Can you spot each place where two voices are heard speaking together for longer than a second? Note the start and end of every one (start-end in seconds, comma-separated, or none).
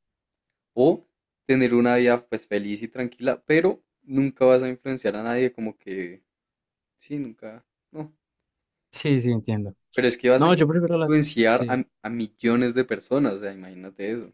10.4-11.8